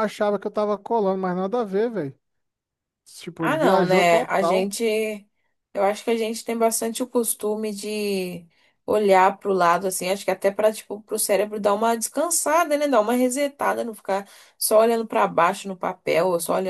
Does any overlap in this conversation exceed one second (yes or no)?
yes